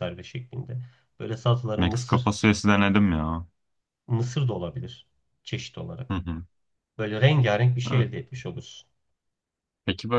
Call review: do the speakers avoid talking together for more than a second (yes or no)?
yes